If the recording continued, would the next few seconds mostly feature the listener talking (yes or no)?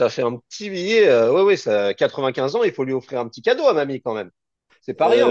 yes